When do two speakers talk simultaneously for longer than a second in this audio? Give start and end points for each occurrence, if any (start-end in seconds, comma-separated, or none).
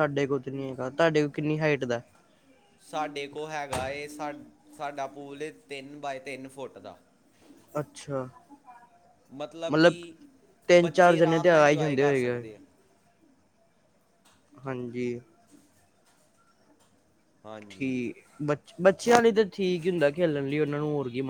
10.8-12.4